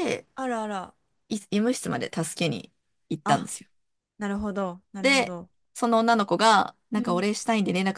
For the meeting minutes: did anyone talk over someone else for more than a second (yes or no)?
no